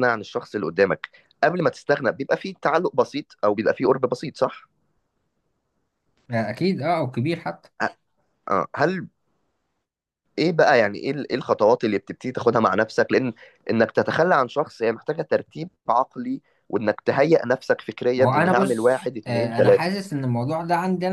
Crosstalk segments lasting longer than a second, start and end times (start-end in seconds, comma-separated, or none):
18.1-19.9